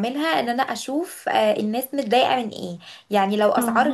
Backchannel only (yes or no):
yes